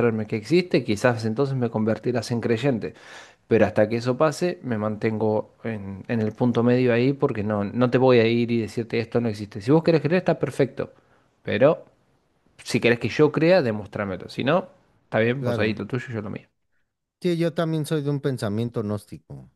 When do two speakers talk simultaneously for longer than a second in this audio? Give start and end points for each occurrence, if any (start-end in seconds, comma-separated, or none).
none